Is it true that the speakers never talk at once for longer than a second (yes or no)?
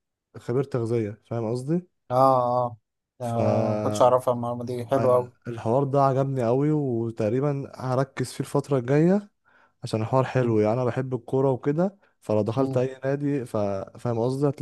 yes